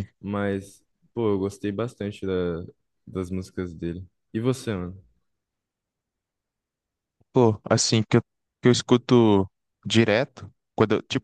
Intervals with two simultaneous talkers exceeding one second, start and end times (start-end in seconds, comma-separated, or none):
none